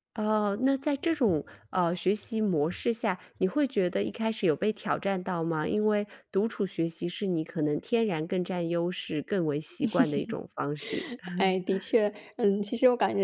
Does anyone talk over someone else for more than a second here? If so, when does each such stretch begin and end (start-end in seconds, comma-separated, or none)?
none